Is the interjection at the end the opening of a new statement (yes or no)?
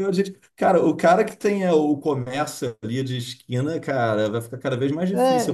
yes